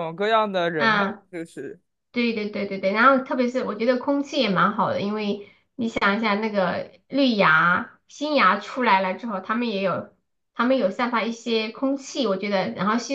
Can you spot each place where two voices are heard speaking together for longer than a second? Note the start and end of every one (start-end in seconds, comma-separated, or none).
none